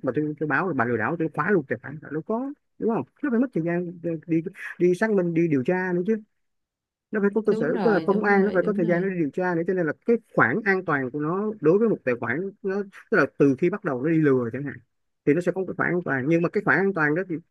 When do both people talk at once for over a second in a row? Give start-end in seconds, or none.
7.5-9.1